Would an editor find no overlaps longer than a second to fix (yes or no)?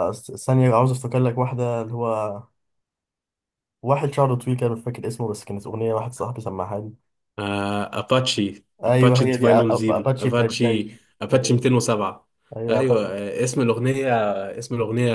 no